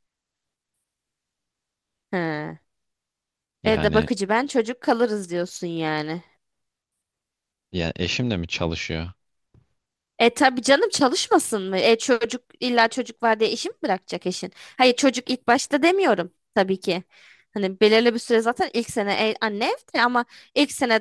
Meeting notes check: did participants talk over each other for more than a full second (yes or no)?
no